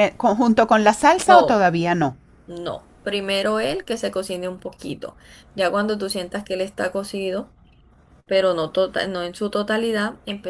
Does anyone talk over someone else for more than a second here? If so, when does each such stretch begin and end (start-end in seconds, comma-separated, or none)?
none